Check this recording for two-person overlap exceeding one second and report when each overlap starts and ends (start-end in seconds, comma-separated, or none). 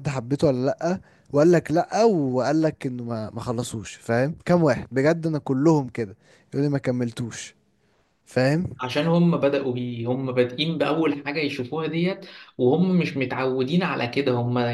none